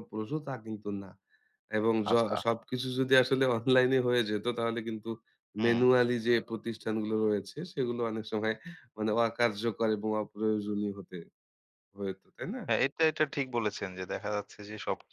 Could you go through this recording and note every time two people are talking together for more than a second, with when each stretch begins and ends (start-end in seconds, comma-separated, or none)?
none